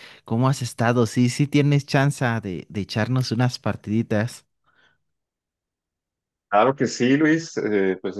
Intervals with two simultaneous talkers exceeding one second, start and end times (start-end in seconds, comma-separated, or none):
none